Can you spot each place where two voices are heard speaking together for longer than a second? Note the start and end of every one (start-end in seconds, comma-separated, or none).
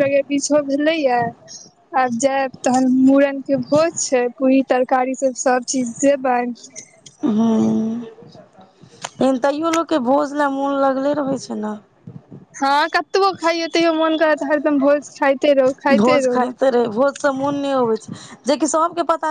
none